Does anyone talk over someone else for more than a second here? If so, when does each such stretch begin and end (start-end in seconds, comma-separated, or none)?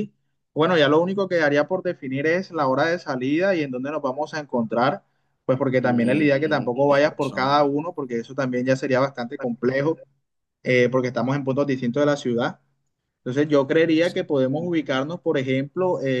5.8-7.7